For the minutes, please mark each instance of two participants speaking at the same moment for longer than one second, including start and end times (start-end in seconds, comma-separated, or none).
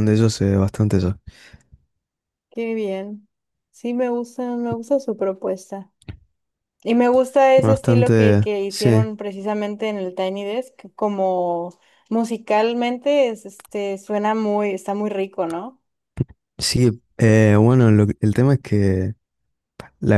7.6-9.1